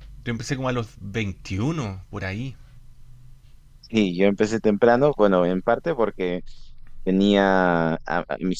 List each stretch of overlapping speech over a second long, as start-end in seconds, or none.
none